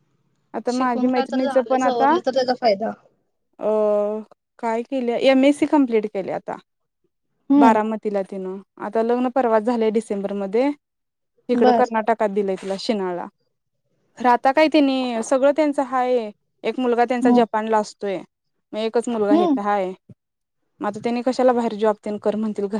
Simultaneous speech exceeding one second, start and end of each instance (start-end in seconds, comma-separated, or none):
0.7-2.1